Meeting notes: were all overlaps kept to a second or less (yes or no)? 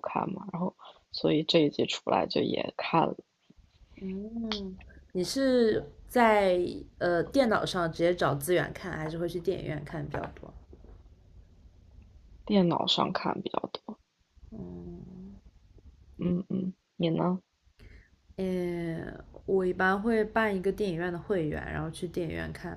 yes